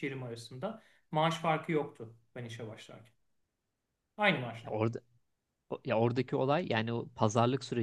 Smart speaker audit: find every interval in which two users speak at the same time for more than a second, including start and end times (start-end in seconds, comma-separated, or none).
none